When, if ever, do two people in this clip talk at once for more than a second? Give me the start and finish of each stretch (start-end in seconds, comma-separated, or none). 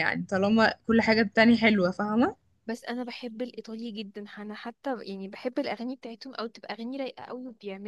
none